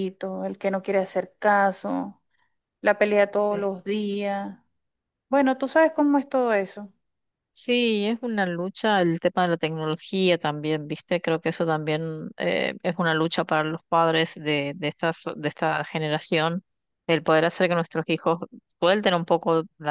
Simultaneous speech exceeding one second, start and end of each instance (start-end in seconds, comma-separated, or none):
none